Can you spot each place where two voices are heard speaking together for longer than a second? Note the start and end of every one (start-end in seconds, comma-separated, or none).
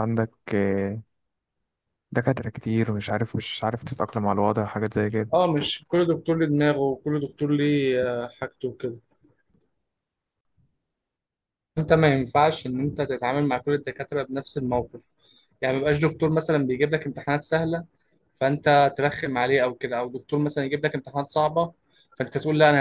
none